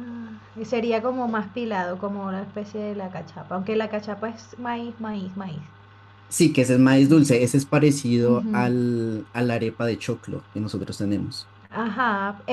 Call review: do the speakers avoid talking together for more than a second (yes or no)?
yes